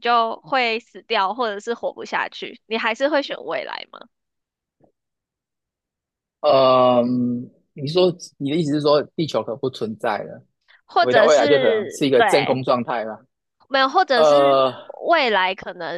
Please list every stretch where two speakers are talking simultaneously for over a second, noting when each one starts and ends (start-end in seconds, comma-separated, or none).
11.0-12.6